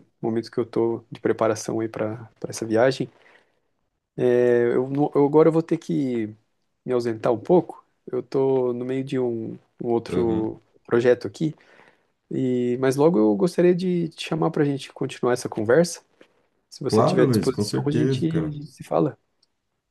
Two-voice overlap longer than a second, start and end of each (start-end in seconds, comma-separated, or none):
16.9-18.6